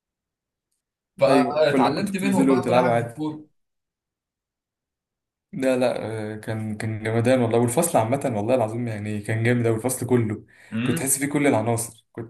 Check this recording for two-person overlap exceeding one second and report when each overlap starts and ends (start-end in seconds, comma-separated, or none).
1.3-3.1